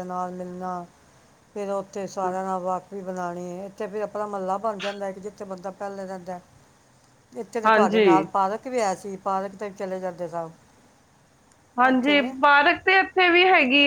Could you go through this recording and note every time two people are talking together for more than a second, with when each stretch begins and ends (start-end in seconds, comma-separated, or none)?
none